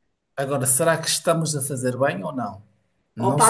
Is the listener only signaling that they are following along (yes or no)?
no